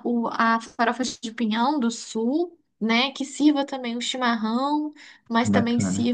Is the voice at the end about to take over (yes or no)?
no